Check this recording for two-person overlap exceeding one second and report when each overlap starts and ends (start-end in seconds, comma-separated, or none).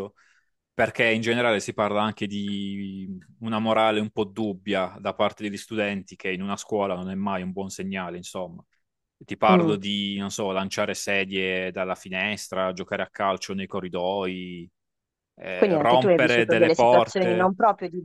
15.5-17.5